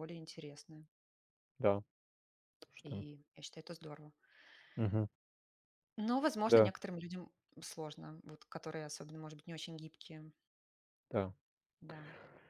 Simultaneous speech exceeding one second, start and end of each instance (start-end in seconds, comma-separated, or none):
none